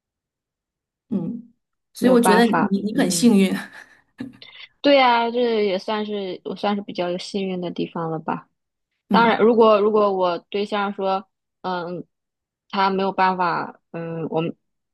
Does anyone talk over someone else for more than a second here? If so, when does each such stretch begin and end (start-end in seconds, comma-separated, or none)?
2.0-3.4